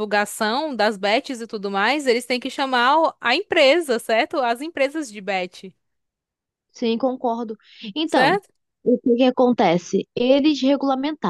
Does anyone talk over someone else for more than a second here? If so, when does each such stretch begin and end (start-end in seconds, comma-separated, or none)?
none